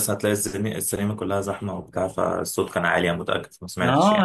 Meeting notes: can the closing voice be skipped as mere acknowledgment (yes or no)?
no